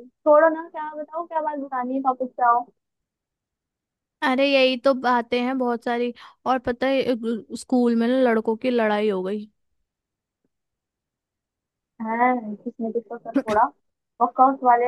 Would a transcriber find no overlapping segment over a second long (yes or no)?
yes